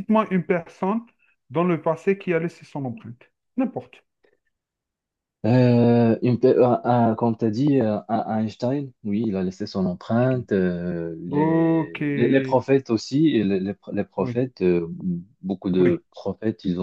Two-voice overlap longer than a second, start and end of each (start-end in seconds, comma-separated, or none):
11.3-12.6